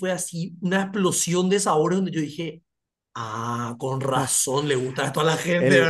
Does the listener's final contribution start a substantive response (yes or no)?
yes